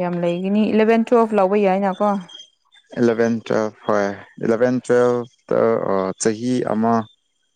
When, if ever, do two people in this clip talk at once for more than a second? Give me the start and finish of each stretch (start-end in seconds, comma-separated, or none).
none